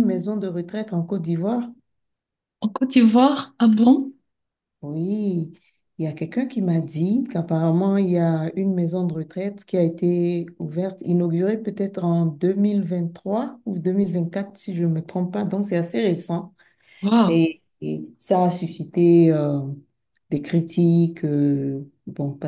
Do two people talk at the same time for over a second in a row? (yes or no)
no